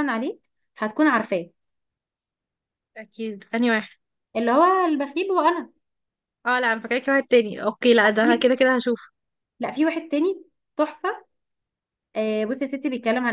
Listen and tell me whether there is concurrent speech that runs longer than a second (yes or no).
no